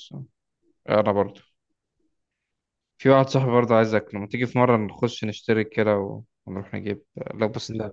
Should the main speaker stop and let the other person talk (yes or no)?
no